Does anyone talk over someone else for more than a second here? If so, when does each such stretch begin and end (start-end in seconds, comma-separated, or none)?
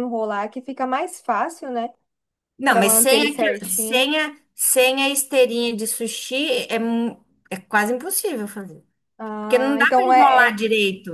2.7-4.1, 9.4-10.6